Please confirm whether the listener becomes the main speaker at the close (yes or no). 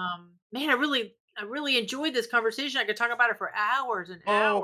yes